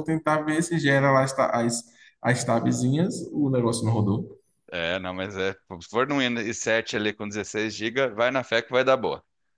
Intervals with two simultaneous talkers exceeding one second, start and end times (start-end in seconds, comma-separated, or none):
none